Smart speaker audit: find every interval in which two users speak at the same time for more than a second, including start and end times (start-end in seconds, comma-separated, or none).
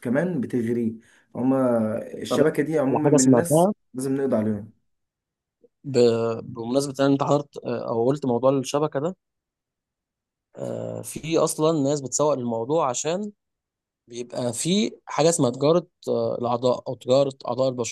2.3-3.7